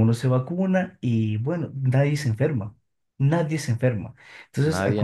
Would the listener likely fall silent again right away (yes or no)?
yes